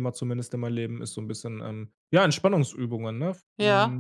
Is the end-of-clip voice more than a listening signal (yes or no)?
yes